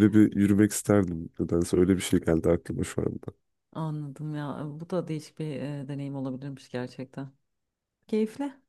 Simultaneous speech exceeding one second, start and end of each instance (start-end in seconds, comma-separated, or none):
none